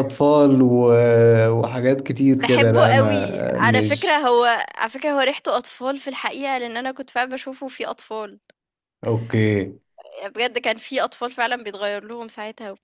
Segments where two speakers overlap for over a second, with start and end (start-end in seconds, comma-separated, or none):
2.4-4.2